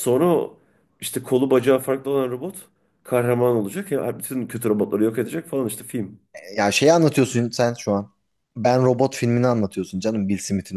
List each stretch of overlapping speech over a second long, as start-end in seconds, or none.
none